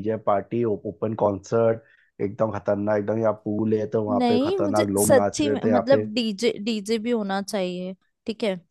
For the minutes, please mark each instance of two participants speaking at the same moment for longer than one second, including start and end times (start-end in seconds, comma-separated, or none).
4.1-6.0